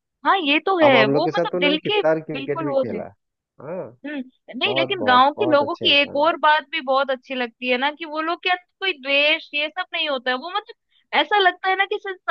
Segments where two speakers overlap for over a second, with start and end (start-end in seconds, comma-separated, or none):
0.8-3.0, 4.6-6.3